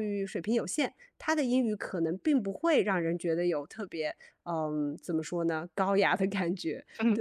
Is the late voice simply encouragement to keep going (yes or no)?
no